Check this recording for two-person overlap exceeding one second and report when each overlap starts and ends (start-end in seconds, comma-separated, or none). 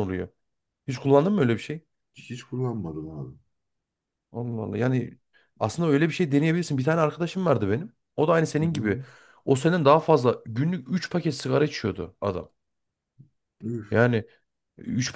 none